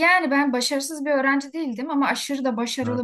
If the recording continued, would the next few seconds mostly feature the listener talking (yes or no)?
no